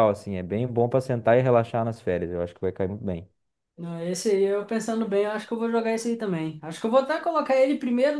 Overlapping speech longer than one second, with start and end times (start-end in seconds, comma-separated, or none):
none